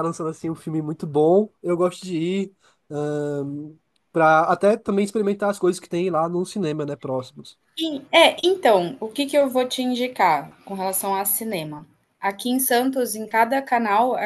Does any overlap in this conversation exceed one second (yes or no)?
no